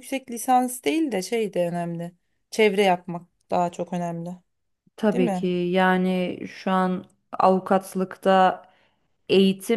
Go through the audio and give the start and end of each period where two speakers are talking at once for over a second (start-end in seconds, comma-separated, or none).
none